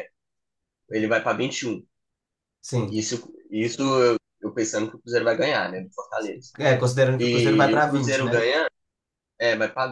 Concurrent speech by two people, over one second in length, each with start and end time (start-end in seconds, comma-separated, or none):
7.2-8.5